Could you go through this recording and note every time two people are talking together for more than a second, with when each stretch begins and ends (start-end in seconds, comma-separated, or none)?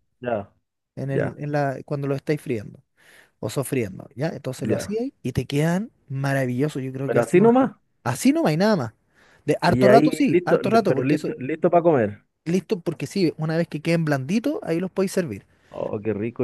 9.7-11.3